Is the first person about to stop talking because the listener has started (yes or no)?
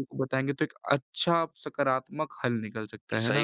yes